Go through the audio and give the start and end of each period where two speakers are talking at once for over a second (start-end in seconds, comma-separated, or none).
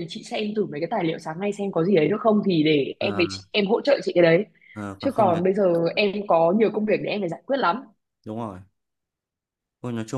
none